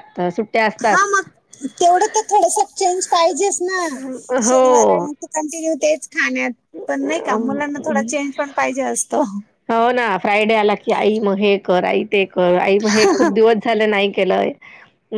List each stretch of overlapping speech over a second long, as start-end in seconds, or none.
none